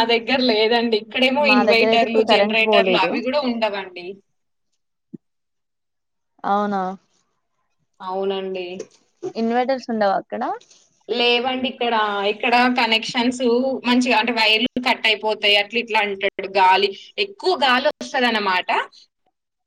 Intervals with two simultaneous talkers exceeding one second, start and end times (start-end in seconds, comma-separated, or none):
1.5-3.1